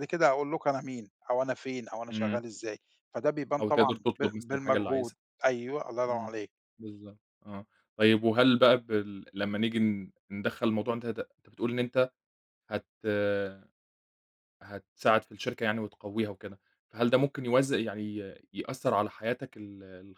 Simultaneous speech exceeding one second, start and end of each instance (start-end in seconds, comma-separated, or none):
3.6-5.2